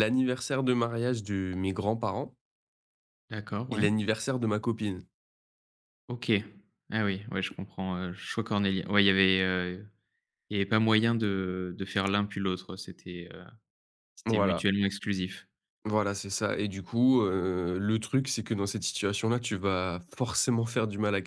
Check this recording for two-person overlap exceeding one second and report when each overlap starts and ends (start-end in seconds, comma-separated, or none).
none